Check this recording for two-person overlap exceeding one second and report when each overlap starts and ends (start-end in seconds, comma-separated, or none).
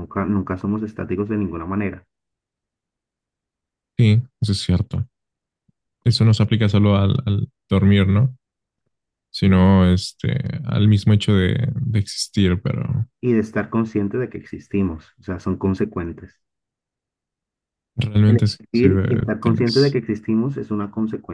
18.2-20.0